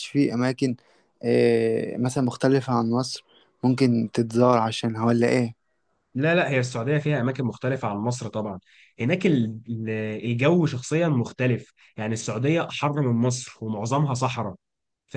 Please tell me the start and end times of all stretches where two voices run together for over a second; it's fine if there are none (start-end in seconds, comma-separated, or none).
none